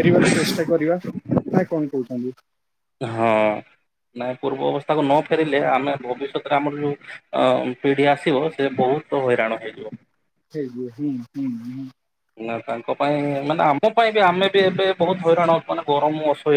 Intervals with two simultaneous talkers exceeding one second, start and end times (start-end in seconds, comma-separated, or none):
none